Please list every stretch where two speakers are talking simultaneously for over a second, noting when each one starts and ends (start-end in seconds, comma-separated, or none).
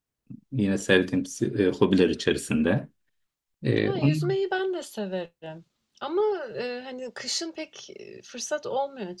none